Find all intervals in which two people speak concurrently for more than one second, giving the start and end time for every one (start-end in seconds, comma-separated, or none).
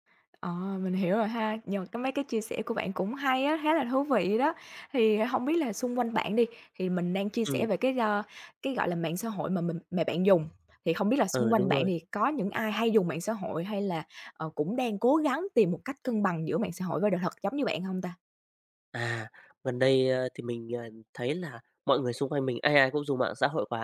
none